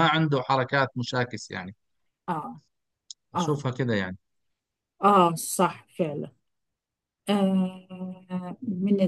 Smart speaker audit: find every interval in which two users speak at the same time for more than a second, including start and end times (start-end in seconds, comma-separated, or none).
none